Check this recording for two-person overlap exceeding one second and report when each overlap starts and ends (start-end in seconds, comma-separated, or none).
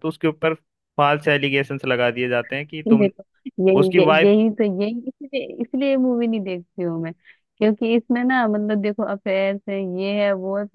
none